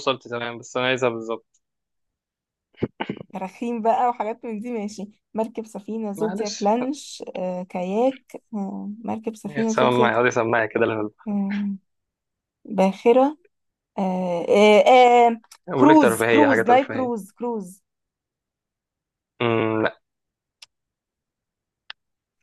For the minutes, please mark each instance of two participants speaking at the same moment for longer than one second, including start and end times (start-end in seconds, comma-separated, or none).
15.7-17.1